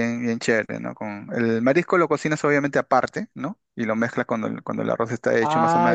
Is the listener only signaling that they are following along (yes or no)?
no